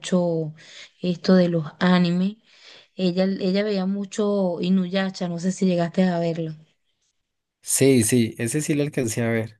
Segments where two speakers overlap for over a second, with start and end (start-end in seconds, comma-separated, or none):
none